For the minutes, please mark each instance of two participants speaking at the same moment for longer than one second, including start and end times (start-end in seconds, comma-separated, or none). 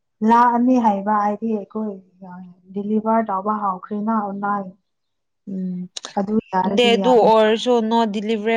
none